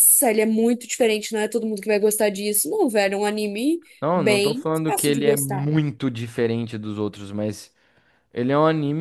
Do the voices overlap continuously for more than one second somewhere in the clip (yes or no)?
yes